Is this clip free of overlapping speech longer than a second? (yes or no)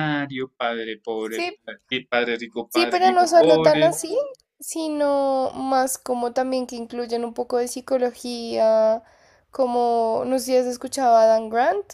no